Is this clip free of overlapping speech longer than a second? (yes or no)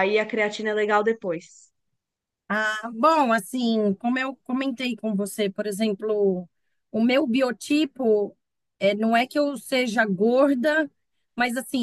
yes